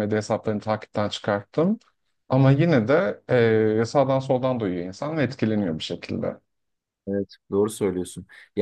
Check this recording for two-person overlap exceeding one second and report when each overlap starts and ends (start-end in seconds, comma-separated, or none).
none